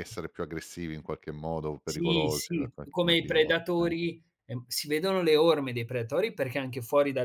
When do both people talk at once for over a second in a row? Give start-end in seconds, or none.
1.9-3.9